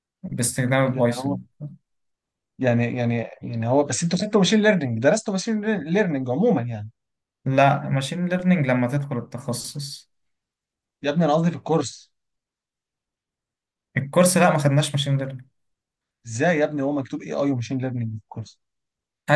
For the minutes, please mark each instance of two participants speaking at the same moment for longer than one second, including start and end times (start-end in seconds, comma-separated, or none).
none